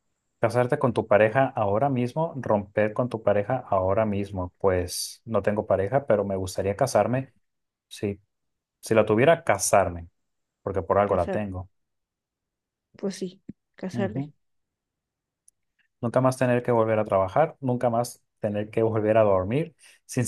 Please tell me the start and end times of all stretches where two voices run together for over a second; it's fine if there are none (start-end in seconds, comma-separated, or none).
none